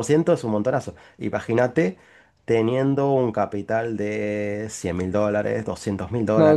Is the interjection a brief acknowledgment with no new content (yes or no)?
no